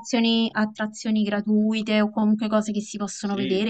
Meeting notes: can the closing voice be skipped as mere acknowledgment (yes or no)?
no